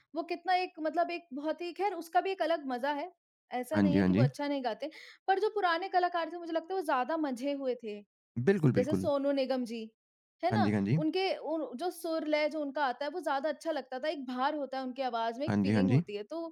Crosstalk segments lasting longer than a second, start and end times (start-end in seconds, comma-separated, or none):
none